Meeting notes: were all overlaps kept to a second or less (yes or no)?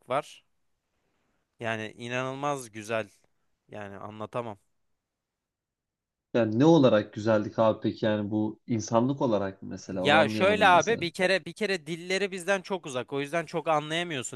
no